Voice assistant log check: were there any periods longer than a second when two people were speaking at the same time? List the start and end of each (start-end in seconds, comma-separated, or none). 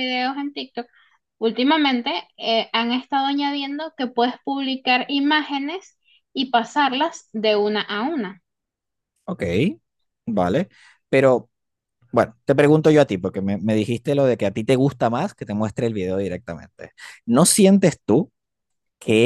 none